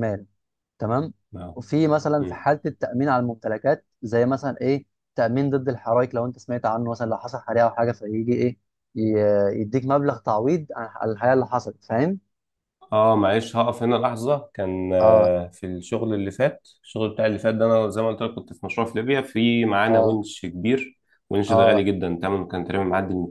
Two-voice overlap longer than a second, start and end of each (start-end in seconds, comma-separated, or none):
none